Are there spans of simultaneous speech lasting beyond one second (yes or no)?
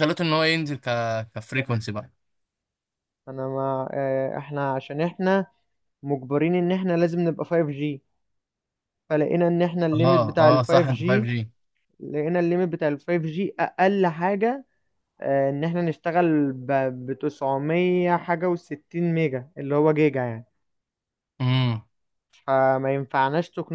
yes